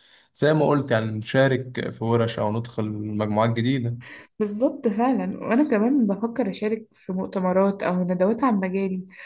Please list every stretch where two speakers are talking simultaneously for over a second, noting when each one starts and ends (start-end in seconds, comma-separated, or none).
none